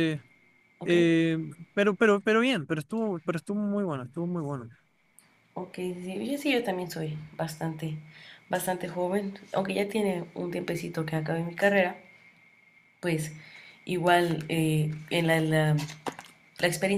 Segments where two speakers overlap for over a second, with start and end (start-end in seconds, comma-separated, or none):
none